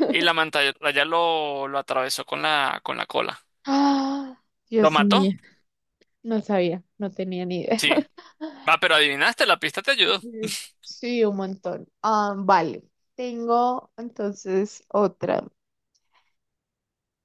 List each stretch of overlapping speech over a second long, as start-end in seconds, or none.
none